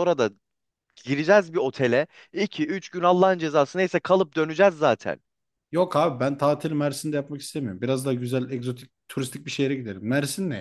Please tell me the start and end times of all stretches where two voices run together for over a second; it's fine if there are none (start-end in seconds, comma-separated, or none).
none